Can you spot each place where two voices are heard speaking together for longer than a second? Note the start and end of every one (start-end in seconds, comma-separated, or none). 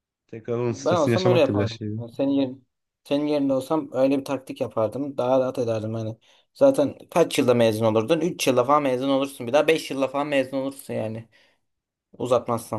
0.7-1.9